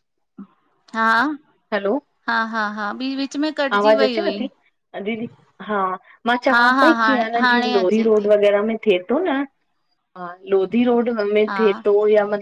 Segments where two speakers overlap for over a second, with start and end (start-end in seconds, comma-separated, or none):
6.5-8.3